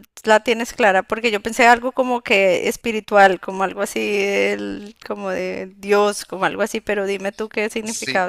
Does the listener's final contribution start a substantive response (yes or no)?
yes